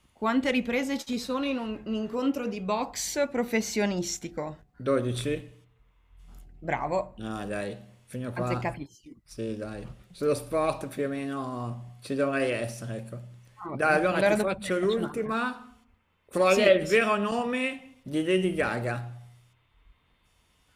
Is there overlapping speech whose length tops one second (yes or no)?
yes